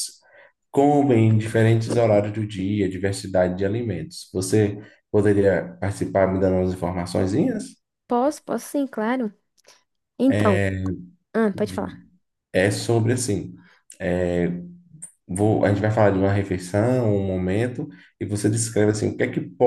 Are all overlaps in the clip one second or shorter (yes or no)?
yes